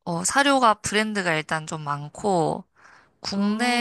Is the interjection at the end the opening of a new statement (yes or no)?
no